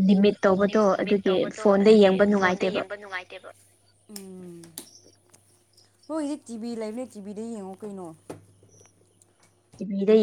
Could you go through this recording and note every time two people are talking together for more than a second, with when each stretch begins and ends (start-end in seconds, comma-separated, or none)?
0.7-2.8